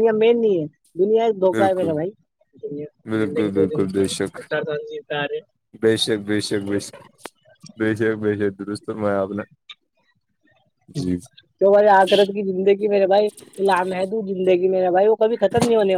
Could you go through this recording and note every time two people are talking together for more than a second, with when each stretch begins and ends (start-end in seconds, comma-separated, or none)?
none